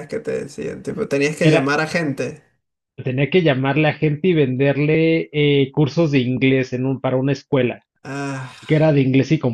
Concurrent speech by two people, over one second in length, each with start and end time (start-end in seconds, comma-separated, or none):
none